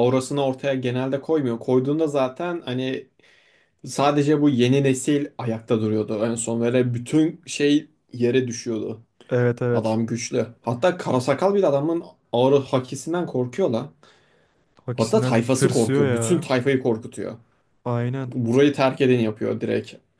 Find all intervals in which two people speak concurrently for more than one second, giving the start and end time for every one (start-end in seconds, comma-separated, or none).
14.9-16.5